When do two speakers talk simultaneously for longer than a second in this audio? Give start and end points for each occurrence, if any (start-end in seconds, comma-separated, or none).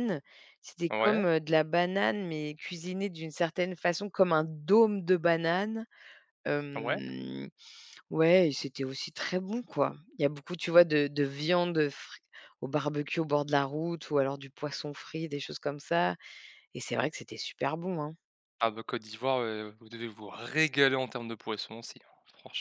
none